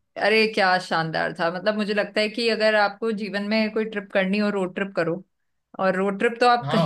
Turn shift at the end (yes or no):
no